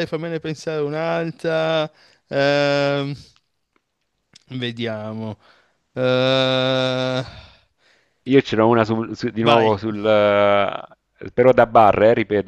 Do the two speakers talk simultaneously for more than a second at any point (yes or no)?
no